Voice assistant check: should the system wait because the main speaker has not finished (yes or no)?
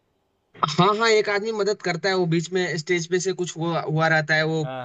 yes